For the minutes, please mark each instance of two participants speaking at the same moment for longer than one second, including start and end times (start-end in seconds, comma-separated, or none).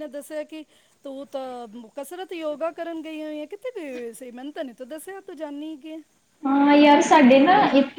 none